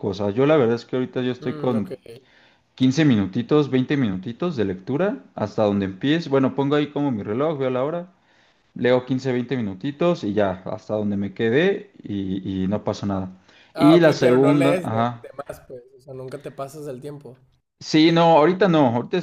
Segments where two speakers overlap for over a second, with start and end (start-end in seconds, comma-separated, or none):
13.8-15.2